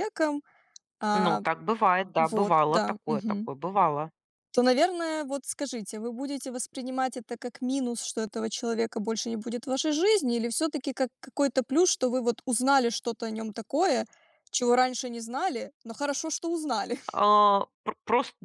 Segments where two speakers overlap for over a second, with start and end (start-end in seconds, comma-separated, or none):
2.2-3.5